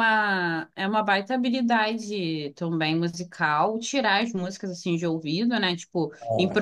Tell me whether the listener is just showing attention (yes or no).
yes